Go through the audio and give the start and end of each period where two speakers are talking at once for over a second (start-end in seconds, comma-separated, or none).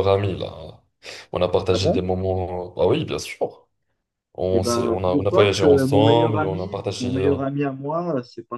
4.5-7.4